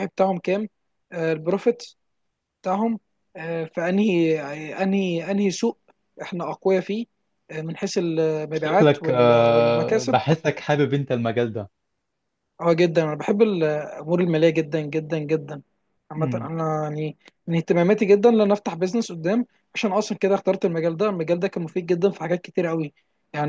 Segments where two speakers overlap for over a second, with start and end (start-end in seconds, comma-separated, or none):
8.5-10.2